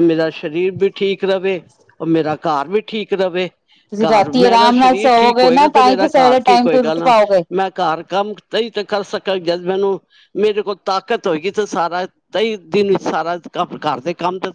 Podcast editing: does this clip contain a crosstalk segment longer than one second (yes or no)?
yes